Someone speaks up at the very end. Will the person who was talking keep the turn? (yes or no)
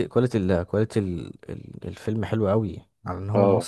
yes